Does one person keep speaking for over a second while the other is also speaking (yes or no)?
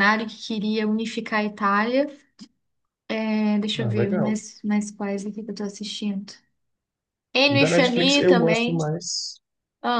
yes